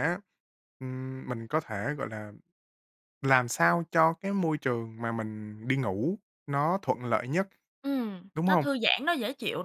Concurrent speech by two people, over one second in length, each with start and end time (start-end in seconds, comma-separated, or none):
none